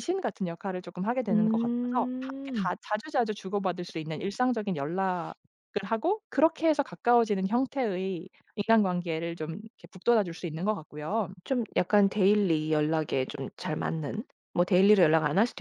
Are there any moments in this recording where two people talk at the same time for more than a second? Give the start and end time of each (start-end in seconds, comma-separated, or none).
1.3-2.7